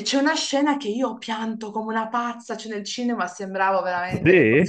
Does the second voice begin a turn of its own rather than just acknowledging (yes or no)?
no